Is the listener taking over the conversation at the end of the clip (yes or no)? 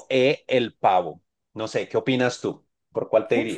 yes